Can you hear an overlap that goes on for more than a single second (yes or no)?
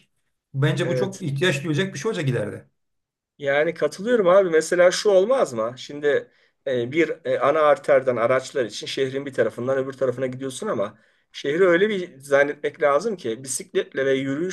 no